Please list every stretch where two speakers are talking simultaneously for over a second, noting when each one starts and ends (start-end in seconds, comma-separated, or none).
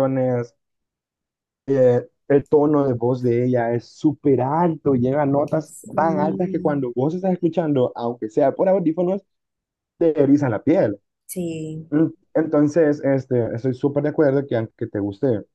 5.6-6.9